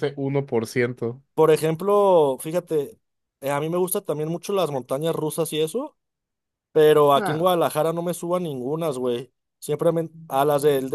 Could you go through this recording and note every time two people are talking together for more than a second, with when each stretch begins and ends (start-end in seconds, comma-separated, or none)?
none